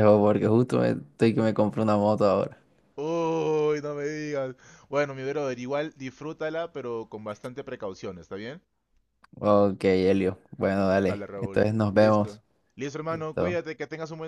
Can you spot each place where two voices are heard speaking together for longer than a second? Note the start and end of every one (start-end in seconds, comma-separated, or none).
11.1-12.4